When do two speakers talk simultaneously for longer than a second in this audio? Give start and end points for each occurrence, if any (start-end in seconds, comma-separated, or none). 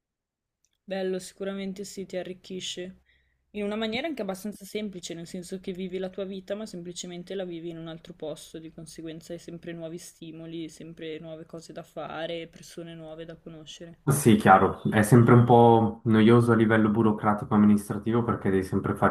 none